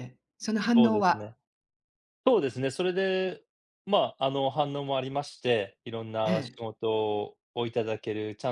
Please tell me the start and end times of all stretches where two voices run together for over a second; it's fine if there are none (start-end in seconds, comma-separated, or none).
none